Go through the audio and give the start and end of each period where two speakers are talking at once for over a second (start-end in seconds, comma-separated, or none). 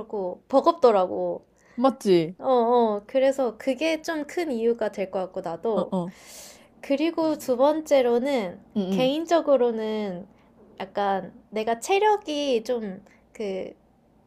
none